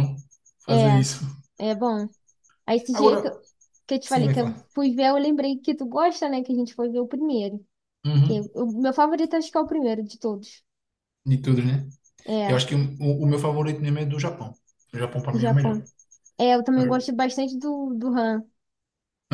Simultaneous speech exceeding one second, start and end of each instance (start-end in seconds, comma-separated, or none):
none